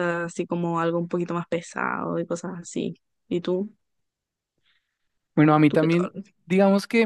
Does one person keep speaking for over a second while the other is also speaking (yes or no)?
no